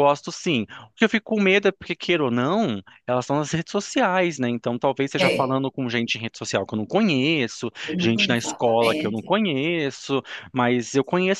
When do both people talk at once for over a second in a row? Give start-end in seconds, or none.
7.8-9.3